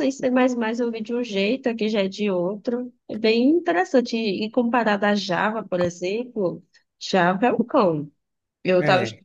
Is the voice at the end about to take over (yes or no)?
no